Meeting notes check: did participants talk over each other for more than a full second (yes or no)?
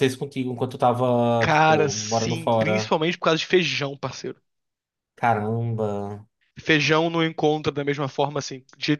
yes